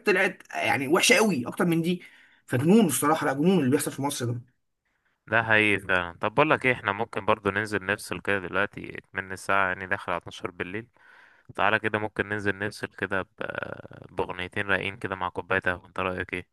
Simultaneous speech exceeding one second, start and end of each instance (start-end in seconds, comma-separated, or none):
none